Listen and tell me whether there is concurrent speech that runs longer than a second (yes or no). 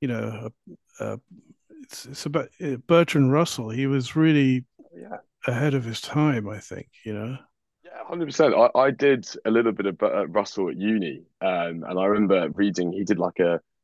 no